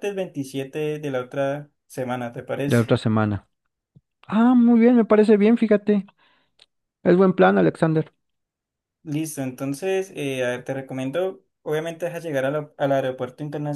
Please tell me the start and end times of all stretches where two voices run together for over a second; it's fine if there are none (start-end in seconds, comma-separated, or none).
none